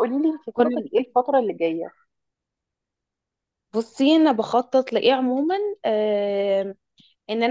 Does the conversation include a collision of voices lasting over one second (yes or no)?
no